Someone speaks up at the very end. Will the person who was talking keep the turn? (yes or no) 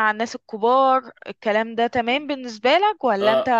no